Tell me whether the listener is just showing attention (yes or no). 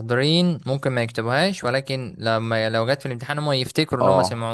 no